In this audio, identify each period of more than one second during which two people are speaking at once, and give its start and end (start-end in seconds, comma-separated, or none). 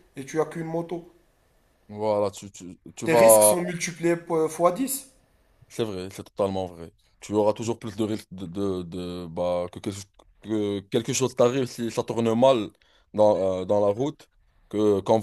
none